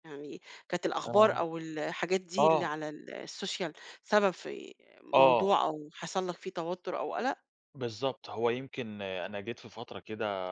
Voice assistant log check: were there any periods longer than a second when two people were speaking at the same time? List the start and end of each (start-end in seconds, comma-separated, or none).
none